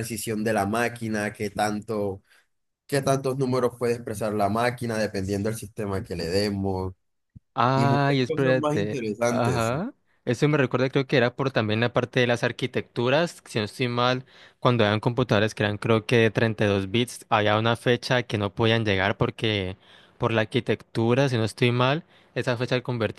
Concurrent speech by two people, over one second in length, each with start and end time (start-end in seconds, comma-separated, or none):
7.8-9.7